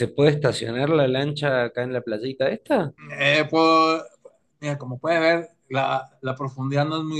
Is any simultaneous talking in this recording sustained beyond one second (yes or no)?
no